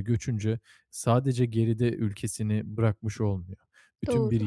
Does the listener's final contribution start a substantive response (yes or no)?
no